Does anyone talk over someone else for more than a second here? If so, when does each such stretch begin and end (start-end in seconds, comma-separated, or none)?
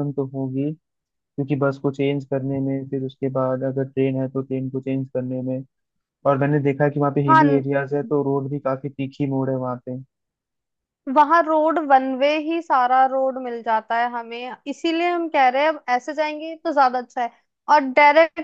none